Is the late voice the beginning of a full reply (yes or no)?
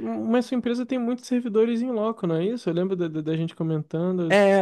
yes